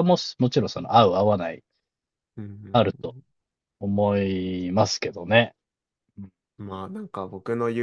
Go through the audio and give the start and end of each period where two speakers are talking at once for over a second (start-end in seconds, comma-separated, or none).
none